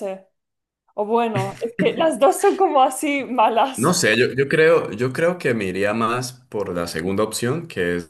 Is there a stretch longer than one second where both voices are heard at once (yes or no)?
no